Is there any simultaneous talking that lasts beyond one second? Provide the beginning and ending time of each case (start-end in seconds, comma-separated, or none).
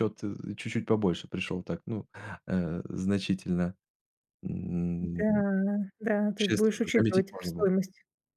6.3-7.7